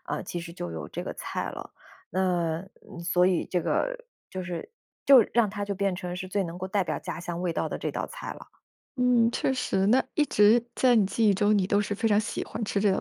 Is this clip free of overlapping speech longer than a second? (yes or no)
yes